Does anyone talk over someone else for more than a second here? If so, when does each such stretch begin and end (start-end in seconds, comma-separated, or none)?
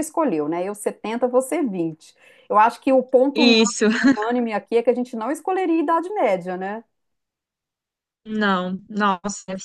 none